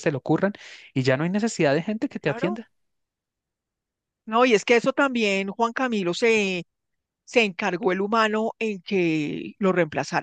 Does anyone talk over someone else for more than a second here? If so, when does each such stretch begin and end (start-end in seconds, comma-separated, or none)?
none